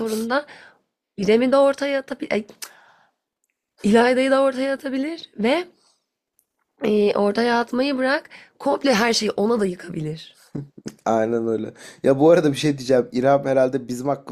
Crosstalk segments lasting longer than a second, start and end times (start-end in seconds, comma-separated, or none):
none